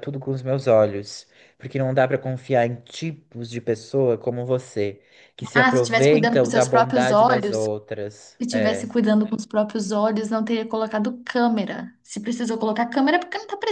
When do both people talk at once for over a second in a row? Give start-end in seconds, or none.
5.5-7.7